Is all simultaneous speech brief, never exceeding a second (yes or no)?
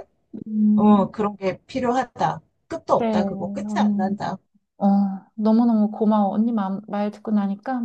no